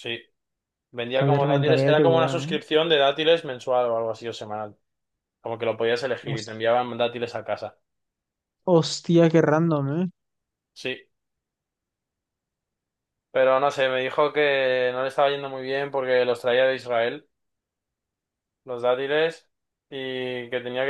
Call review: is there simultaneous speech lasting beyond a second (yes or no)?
yes